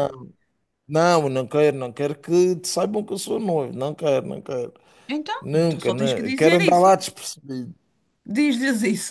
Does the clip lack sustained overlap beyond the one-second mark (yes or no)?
no